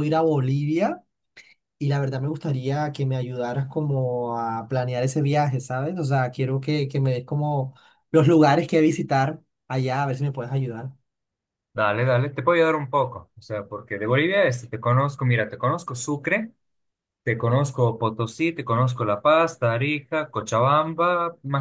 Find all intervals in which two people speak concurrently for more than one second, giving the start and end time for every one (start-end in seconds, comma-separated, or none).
none